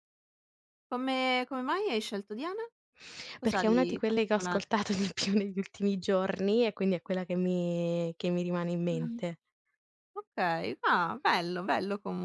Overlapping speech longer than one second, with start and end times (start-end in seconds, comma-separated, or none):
3.4-4.7